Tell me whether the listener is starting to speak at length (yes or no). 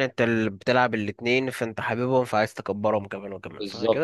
yes